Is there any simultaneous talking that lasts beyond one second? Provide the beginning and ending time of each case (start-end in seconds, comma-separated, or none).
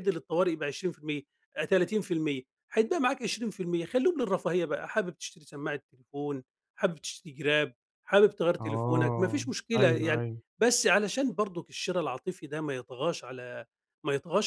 8.6-10.4